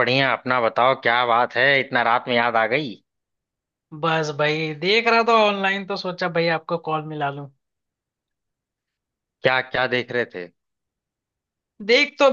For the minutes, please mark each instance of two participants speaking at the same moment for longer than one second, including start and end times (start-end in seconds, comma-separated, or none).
none